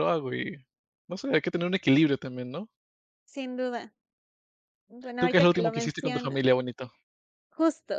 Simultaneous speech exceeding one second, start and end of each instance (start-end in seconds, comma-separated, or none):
5.2-6.4